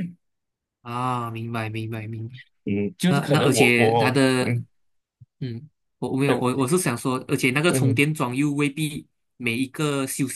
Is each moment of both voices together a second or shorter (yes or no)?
no